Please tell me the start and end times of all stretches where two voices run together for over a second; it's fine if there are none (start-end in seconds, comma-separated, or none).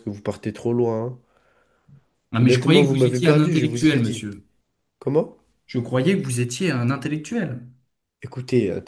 2.4-4.3